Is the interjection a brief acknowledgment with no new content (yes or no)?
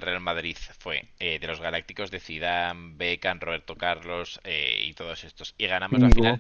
yes